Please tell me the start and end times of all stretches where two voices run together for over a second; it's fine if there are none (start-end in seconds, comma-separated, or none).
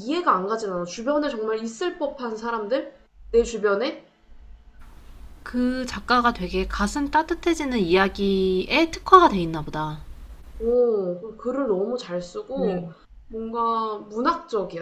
none